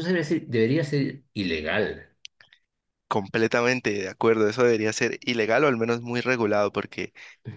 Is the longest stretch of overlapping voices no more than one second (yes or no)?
yes